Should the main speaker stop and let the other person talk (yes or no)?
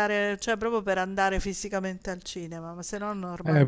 yes